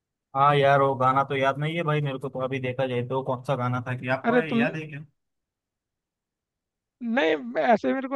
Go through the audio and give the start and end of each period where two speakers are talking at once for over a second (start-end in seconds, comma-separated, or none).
none